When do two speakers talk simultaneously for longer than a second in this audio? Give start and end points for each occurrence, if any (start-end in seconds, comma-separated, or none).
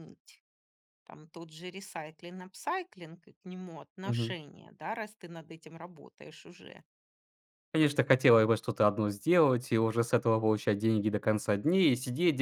none